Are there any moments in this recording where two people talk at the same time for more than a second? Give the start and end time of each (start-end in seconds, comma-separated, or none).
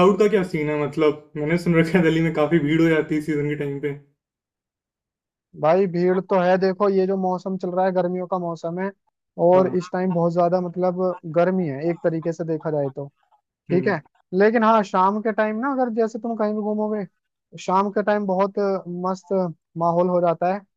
none